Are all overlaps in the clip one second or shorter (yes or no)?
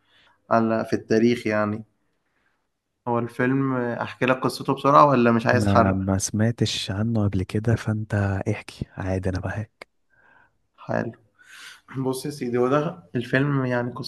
yes